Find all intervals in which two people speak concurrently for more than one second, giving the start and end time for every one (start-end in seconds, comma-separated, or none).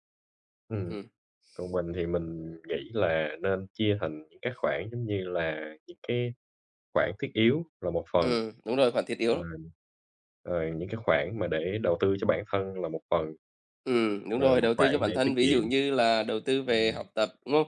14.3-15.7